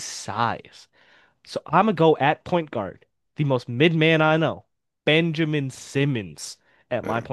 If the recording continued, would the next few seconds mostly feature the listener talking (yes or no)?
yes